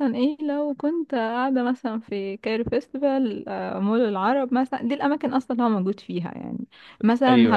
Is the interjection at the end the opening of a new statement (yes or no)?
no